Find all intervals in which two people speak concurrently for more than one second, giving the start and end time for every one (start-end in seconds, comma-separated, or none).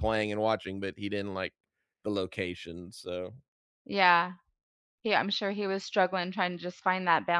none